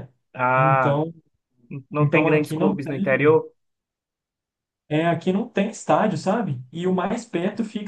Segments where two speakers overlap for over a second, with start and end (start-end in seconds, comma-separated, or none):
2.0-3.4